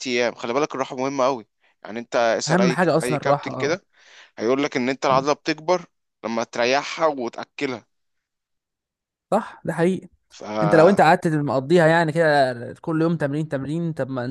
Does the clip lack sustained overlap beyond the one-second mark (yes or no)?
no